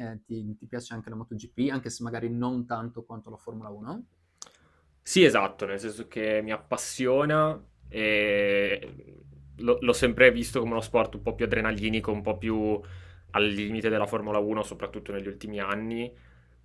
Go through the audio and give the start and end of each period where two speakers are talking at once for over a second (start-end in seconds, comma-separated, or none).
none